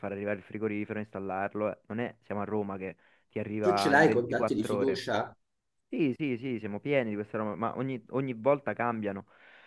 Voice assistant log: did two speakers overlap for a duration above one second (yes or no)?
yes